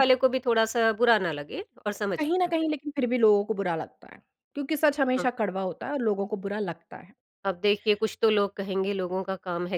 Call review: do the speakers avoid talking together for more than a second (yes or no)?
yes